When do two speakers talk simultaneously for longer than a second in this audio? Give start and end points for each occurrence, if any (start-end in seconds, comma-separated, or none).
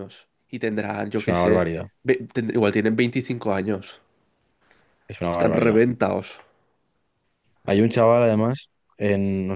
none